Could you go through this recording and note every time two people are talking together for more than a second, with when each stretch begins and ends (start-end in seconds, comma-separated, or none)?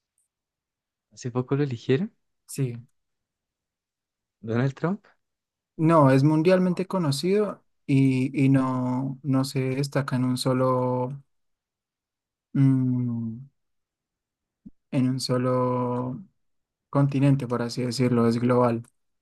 none